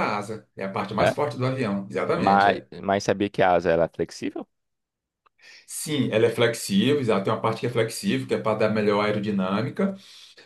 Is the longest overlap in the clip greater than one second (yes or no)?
no